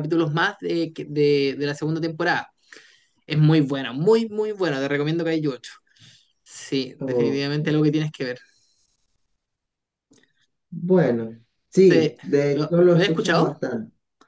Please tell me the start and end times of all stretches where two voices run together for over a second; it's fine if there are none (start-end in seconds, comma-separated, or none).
11.8-13.6